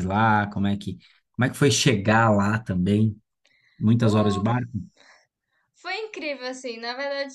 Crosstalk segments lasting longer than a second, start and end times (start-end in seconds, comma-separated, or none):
none